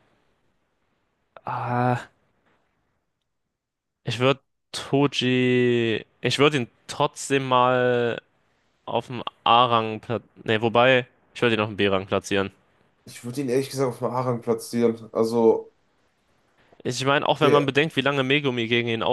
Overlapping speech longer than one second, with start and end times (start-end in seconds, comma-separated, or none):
none